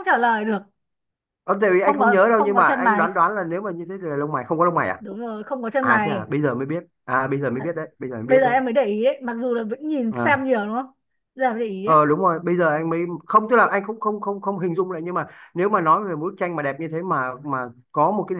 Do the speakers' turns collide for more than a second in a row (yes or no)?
yes